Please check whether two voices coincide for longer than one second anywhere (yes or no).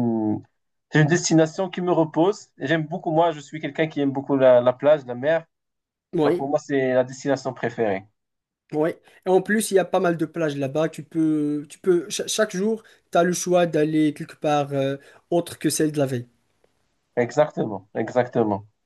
no